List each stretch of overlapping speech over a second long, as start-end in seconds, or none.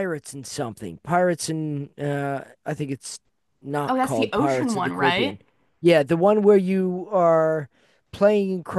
3.9-5.4